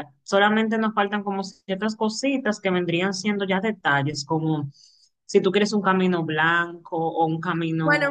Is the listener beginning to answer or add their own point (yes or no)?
yes